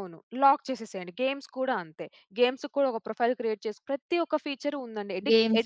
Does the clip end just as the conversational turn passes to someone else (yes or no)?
yes